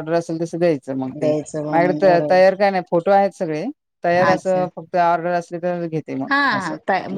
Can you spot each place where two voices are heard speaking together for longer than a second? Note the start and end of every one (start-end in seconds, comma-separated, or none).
1.2-2.5